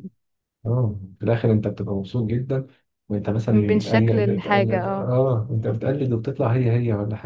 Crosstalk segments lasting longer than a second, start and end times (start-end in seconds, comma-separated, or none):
3.5-5.1